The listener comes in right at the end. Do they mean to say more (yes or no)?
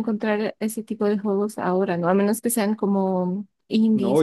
yes